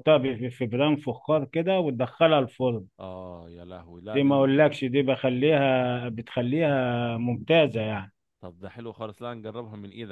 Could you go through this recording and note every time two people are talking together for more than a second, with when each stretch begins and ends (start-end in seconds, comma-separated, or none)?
none